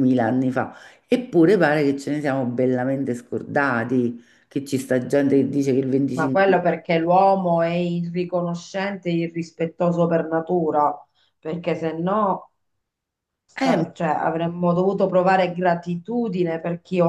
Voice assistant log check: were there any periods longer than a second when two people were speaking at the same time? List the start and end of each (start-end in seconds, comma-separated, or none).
none